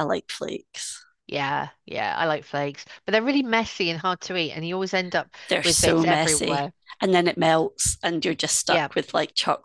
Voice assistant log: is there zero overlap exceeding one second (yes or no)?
no